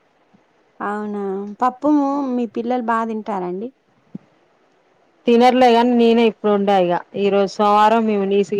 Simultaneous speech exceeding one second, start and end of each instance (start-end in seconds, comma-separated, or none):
none